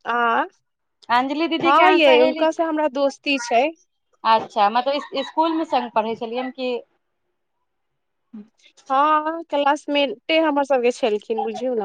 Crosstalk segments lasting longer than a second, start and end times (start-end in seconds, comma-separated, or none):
1.2-2.6